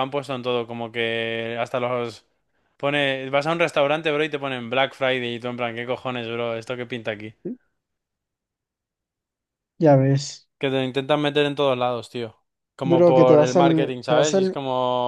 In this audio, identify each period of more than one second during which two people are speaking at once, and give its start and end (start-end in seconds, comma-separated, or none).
12.9-14.6